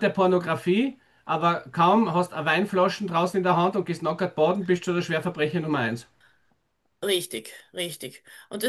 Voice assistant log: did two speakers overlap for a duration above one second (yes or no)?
no